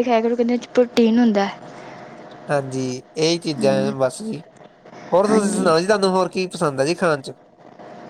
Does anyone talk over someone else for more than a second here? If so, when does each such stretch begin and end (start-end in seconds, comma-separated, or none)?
none